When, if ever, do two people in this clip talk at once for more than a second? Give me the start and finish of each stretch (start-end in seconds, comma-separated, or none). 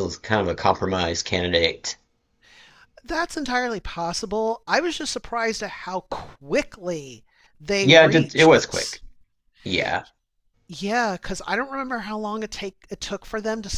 7.8-9.0